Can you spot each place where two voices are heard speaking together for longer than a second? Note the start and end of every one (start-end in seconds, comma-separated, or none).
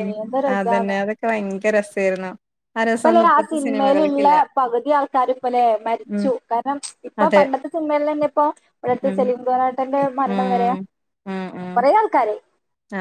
2.9-4.3